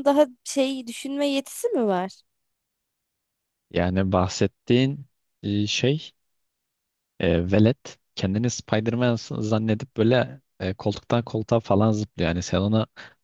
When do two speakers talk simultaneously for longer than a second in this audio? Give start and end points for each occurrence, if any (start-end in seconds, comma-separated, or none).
none